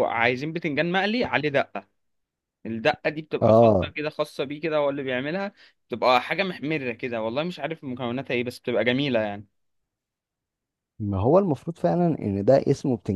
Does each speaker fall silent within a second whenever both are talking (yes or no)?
yes